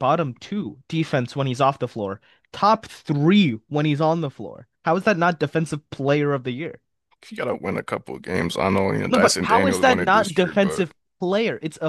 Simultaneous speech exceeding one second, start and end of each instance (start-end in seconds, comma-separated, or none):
9.1-10.9